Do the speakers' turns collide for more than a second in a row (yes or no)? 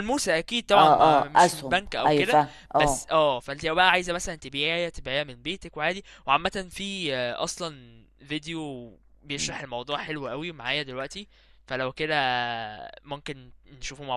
yes